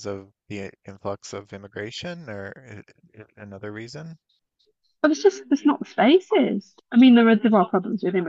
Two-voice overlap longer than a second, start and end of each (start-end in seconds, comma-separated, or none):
none